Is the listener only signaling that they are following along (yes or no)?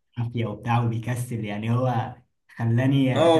no